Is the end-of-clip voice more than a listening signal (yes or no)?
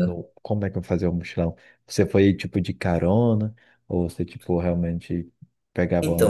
yes